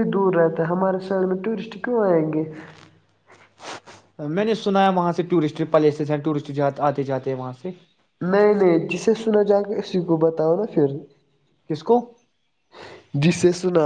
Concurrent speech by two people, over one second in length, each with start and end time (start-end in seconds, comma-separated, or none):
none